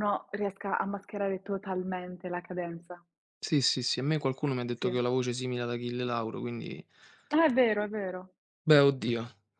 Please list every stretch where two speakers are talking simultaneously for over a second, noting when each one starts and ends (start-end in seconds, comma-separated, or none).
none